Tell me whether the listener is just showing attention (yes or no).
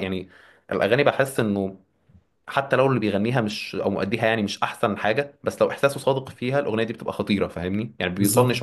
no